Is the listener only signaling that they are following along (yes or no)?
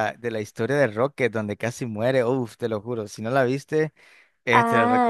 no